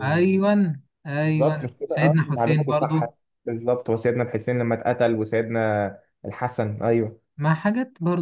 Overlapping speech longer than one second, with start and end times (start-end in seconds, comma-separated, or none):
1.2-3.0